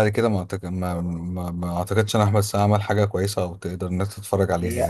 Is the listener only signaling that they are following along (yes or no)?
no